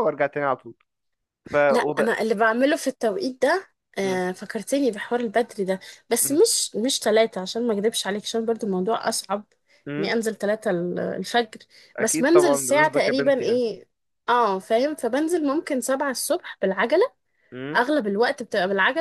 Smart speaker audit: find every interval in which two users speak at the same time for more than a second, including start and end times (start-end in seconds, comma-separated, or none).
12.0-13.6